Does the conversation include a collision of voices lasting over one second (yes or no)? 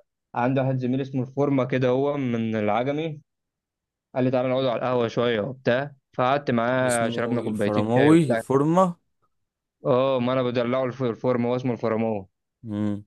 yes